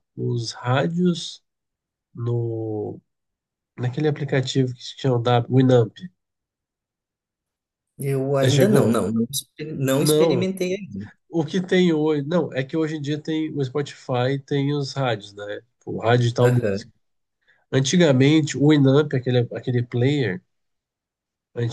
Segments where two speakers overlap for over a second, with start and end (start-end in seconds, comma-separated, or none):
none